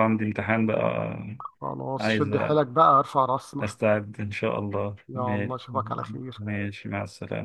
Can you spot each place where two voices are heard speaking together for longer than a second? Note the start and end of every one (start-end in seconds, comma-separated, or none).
none